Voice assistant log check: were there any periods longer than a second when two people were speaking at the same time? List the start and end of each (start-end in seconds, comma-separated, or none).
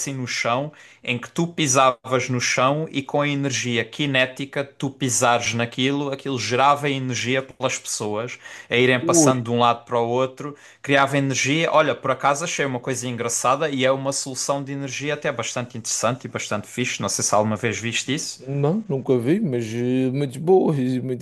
none